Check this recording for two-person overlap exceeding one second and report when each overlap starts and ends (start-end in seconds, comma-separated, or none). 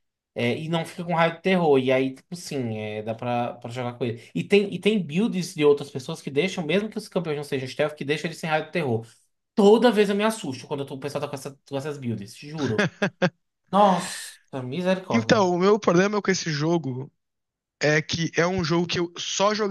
none